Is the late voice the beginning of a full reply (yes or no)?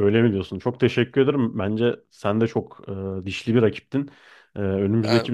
yes